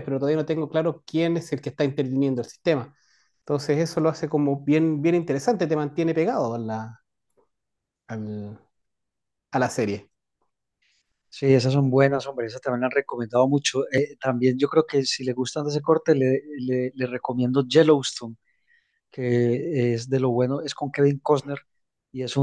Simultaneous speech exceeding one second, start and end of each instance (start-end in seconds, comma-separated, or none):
none